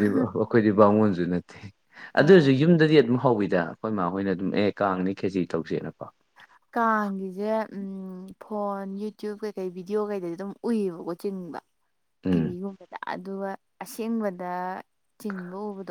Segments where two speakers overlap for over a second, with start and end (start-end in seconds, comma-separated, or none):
none